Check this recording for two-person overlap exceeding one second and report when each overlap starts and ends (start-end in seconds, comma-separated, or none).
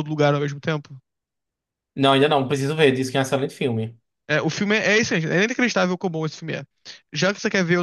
none